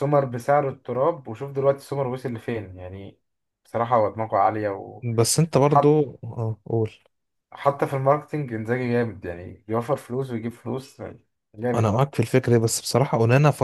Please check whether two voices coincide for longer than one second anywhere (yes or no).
no